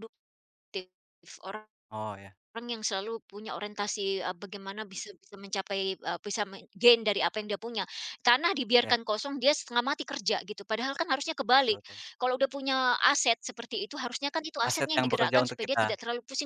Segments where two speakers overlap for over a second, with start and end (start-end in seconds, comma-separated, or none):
14.7-15.9